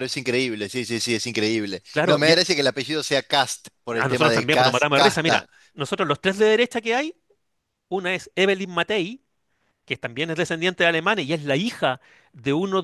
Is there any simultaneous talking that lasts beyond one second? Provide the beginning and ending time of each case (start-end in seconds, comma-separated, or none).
4.0-5.5